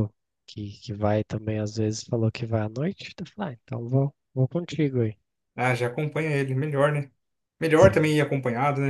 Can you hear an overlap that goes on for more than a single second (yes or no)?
no